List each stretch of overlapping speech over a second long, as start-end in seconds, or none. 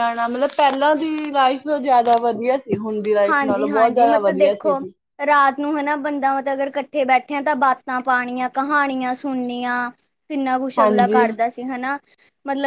3.3-4.8